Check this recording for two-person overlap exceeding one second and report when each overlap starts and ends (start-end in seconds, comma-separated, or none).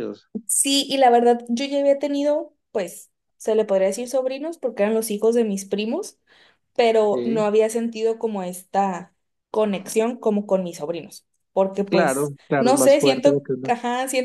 11.9-13.7